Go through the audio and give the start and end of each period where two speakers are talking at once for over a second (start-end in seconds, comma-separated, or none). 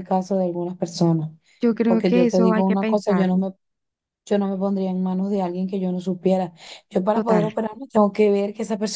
1.9-3.4